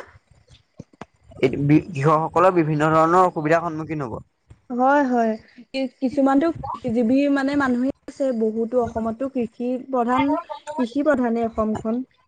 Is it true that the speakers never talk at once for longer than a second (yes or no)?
yes